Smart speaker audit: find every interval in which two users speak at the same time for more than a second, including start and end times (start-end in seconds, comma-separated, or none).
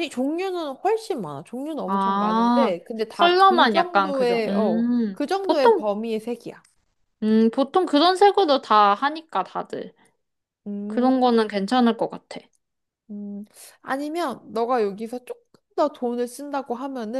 1.9-5.8